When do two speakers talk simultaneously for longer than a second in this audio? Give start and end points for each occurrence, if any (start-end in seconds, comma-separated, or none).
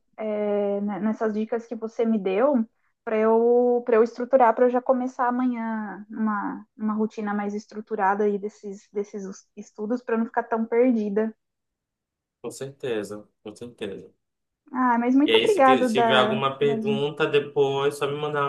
15.2-17.1